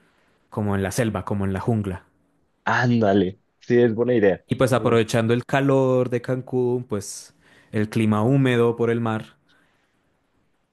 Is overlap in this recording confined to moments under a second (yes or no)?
yes